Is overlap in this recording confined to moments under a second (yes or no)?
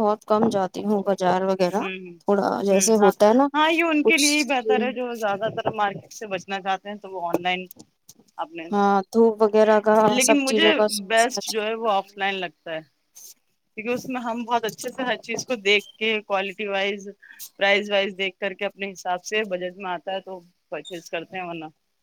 yes